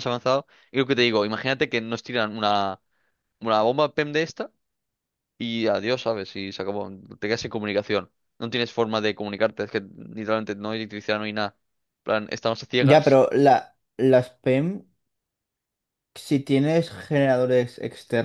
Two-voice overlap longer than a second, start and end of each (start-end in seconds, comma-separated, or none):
none